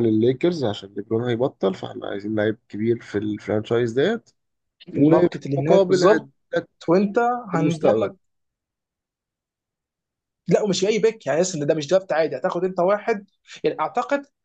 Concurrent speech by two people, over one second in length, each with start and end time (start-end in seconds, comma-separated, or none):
5.0-6.3